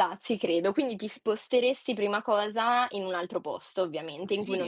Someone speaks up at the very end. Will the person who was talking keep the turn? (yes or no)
no